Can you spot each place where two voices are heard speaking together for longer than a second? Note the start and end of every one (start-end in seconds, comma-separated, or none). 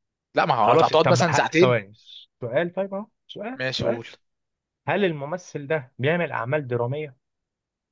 0.6-1.8